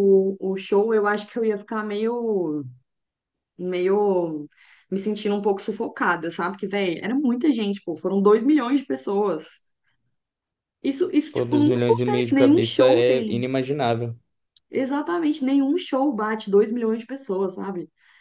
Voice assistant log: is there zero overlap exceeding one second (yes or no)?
no